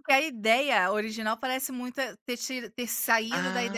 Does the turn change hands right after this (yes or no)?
yes